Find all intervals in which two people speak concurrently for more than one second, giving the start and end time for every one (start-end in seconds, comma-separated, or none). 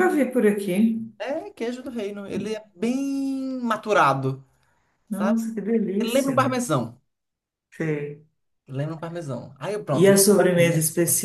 none